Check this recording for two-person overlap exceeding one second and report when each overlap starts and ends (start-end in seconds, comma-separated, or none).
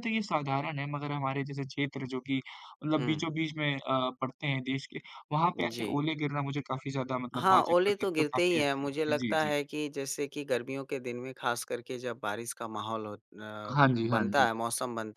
7.3-9.5